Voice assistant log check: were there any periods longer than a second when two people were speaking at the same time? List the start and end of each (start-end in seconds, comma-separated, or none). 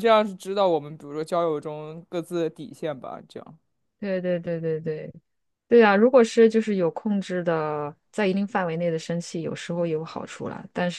none